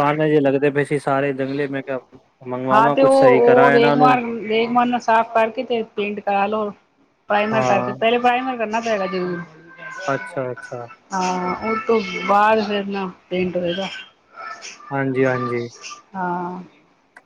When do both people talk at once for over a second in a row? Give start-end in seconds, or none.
2.7-4.1